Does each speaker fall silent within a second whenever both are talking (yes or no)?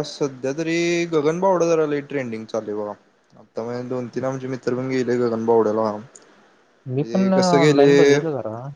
yes